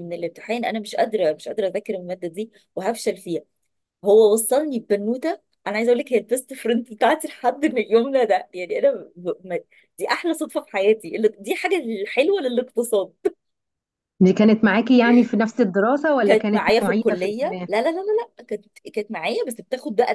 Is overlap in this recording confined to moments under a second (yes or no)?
no